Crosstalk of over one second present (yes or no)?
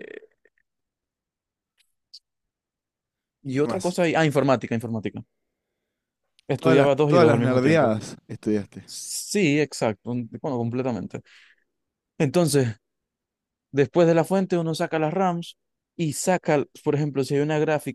yes